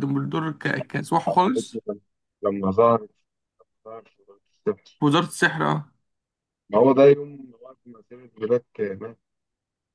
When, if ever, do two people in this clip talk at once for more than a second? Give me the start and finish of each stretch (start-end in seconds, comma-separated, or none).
none